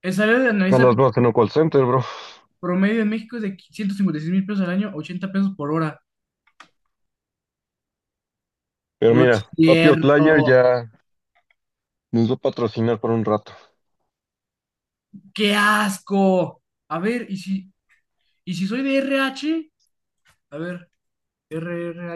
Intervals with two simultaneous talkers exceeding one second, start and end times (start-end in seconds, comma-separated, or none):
9.1-10.6